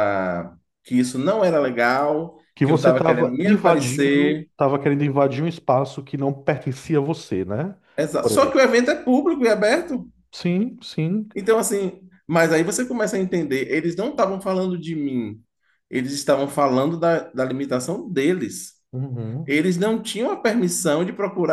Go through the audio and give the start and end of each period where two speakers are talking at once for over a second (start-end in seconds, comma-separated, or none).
2.5-4.5